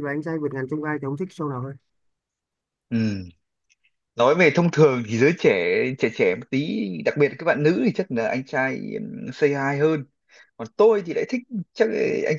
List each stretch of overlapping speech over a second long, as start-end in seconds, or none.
none